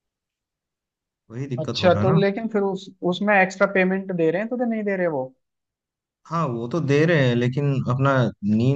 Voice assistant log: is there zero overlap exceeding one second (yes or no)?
yes